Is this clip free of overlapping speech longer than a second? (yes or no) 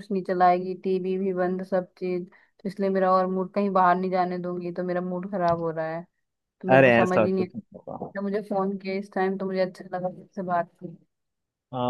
no